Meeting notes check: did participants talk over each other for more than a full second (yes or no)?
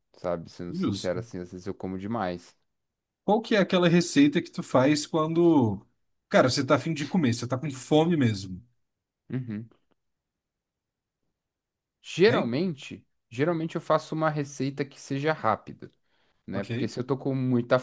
no